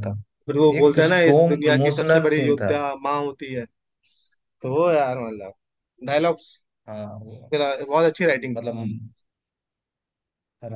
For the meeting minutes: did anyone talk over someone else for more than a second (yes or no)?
yes